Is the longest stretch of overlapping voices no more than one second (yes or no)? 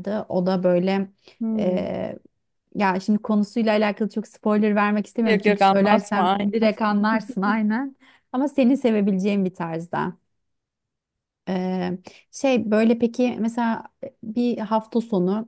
no